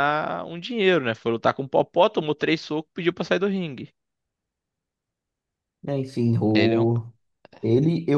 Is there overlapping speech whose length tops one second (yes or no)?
no